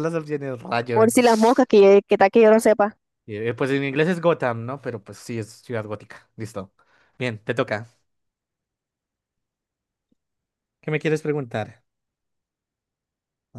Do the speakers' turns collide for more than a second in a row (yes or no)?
no